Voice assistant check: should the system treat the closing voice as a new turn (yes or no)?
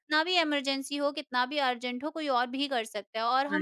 no